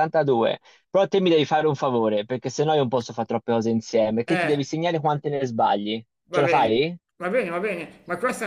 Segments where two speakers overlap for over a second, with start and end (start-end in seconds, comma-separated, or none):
none